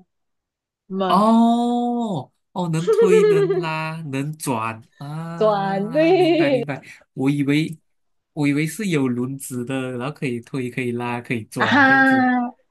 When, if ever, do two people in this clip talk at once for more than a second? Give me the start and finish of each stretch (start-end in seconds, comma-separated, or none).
5.4-6.6